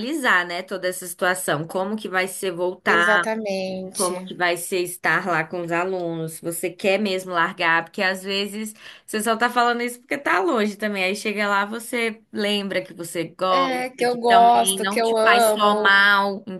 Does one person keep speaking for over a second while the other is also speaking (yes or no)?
yes